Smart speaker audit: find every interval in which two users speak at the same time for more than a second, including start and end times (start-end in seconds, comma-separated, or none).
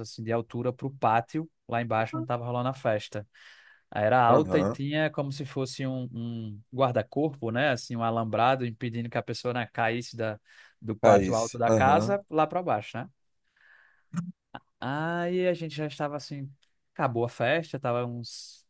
11.0-12.2